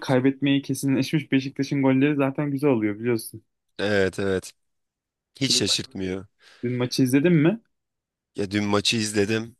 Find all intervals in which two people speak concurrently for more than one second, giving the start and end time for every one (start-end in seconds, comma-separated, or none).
none